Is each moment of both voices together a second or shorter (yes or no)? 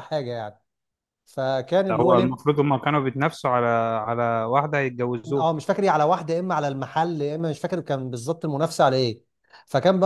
yes